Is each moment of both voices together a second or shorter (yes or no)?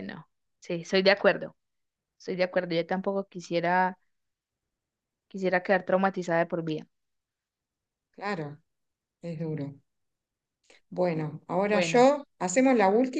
yes